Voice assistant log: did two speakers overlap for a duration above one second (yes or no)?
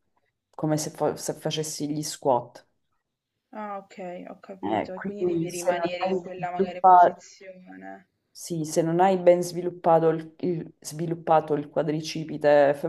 yes